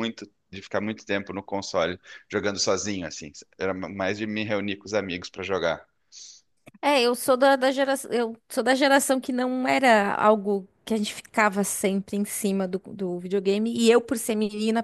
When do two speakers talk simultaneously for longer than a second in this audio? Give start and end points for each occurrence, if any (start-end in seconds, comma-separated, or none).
none